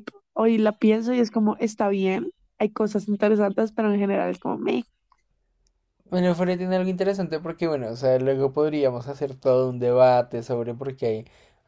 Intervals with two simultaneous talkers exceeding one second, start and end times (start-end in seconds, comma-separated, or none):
none